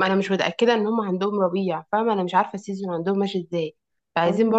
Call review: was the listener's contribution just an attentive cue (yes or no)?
yes